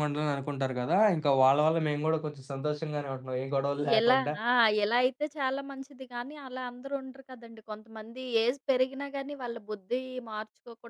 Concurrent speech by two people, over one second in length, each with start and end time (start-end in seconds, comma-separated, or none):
none